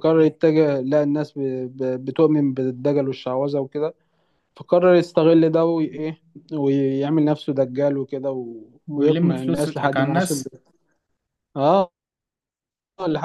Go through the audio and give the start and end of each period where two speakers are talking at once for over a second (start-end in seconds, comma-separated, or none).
8.9-10.4